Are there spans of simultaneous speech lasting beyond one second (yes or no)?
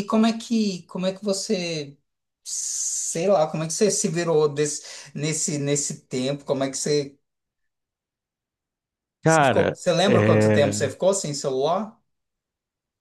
yes